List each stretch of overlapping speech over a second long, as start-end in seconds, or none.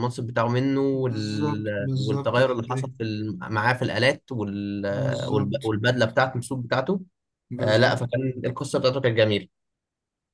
0.9-2.9